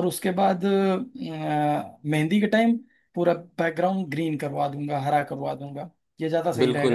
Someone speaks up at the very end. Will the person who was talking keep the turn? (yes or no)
no